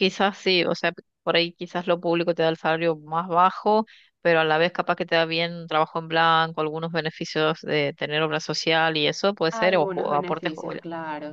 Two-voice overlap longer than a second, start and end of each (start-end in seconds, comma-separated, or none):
9.5-10.8